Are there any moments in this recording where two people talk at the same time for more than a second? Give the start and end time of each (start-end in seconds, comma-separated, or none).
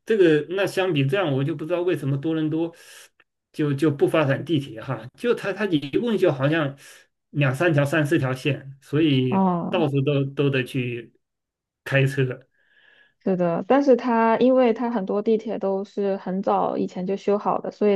none